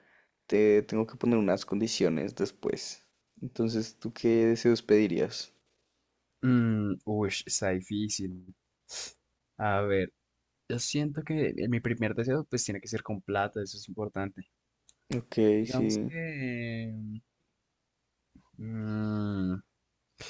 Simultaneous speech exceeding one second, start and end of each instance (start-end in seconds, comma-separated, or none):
none